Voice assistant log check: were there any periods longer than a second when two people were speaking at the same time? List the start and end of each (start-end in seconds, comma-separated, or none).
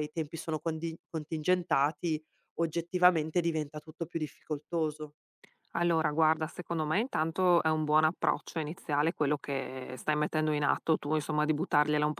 none